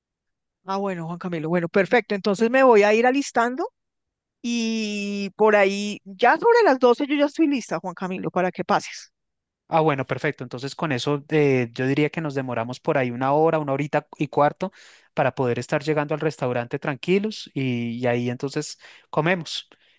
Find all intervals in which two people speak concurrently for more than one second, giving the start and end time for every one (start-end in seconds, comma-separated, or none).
none